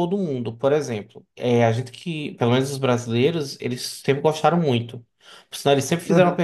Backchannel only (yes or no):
yes